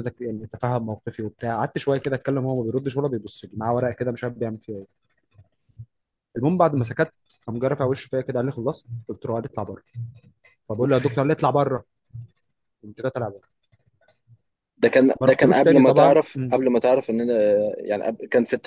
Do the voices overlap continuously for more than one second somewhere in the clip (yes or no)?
yes